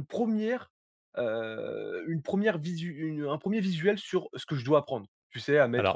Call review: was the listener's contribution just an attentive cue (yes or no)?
no